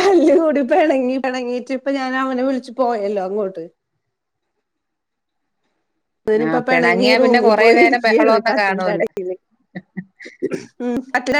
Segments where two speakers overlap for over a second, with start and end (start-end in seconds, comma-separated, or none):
6.4-9.0